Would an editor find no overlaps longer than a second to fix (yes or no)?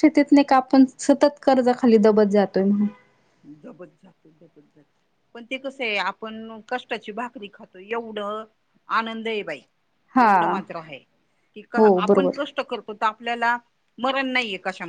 yes